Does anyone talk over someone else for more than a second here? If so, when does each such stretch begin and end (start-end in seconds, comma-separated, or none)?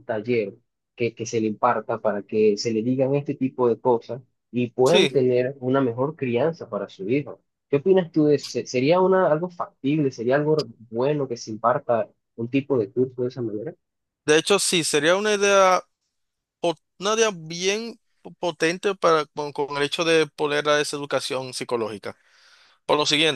none